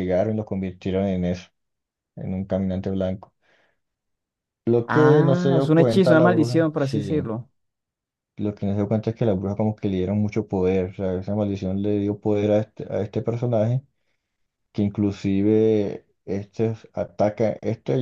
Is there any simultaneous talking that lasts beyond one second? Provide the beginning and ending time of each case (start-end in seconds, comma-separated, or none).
4.8-7.2